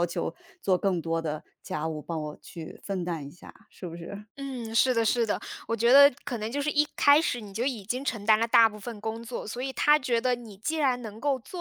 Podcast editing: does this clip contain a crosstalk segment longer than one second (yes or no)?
no